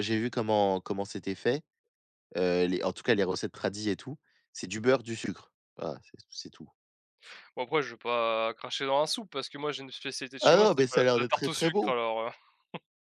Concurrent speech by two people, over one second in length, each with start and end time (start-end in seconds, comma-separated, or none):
10.4-11.9